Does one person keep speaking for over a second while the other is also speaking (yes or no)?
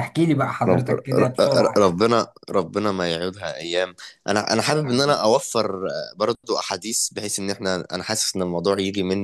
yes